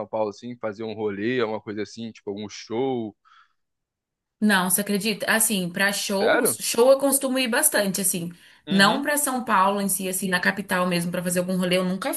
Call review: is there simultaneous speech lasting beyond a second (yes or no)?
no